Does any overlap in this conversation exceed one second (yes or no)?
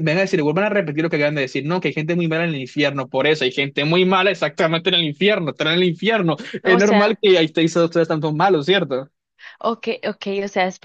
no